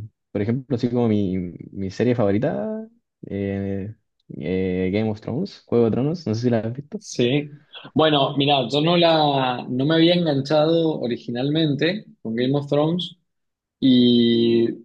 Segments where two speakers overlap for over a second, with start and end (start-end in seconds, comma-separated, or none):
none